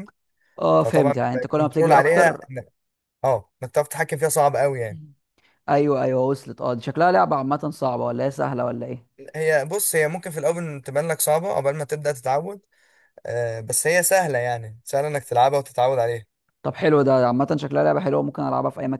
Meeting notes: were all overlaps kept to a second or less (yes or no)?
no